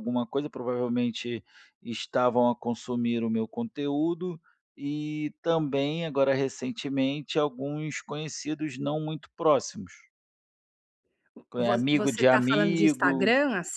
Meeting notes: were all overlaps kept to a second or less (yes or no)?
no